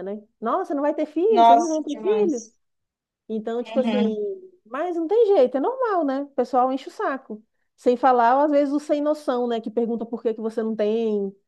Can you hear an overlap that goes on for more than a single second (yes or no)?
yes